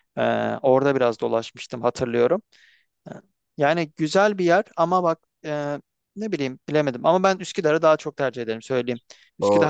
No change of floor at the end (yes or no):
no